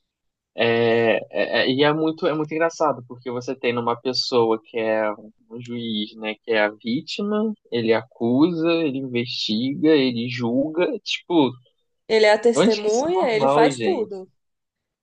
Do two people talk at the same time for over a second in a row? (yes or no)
yes